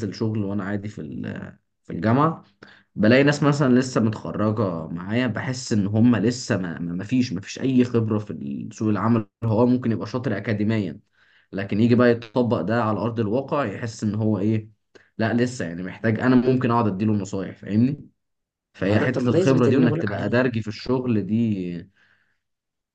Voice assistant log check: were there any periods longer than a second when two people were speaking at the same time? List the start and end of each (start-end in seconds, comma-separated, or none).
18.8-20.4